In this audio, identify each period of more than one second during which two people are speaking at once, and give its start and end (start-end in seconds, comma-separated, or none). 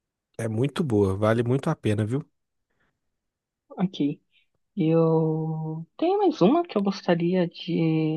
none